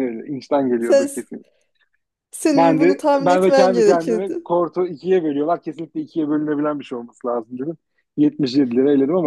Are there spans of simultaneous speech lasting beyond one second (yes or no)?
yes